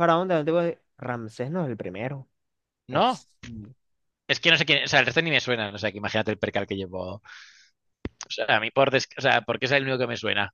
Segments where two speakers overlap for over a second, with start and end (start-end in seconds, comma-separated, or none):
none